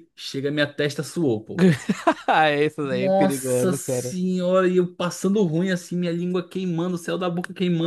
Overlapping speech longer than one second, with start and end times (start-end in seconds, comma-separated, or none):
2.9-4.2